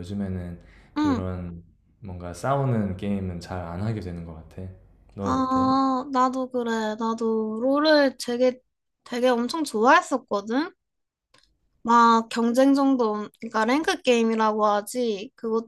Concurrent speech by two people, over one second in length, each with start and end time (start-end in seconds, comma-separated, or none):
none